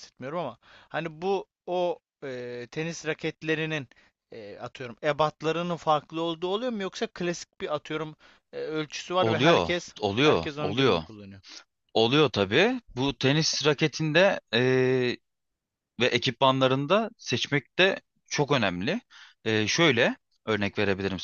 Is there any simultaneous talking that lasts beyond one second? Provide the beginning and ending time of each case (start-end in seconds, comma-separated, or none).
9.2-11.0